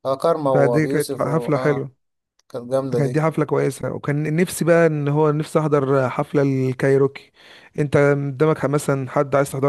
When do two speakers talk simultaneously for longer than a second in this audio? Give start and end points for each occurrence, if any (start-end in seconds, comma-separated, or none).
0.5-1.9